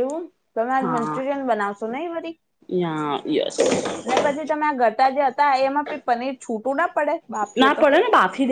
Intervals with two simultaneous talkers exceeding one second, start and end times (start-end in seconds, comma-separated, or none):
none